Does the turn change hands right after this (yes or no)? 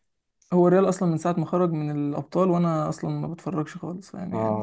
yes